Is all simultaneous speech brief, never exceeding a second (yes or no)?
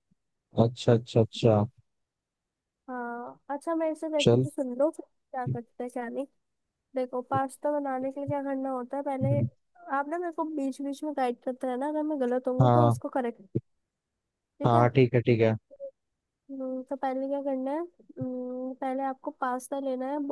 yes